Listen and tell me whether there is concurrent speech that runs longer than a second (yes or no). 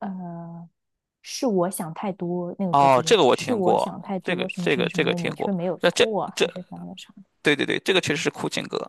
yes